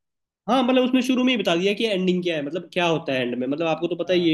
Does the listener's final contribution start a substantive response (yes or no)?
yes